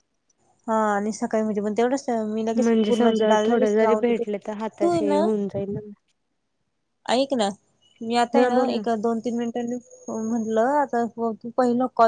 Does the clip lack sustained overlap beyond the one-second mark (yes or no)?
no